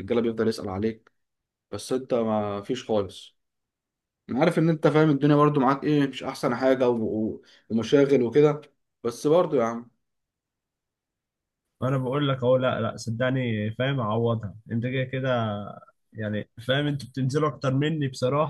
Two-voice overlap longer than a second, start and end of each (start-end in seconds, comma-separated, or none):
none